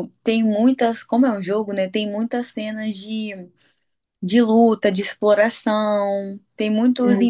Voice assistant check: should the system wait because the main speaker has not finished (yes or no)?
yes